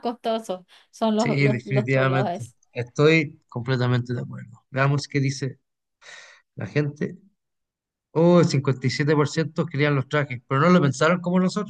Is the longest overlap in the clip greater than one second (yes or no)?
yes